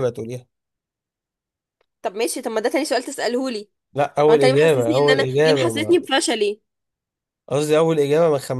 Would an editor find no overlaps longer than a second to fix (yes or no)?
no